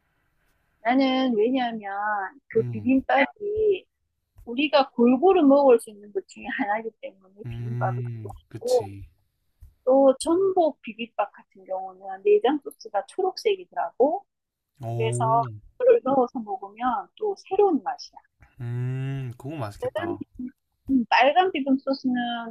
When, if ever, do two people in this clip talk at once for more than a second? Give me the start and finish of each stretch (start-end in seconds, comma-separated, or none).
7.4-8.9